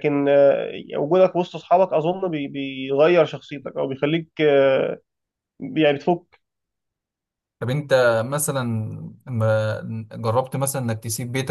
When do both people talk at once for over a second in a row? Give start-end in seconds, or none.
none